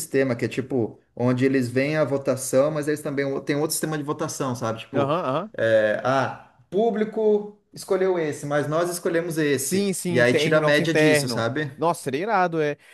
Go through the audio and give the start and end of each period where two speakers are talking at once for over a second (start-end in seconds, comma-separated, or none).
9.6-11.7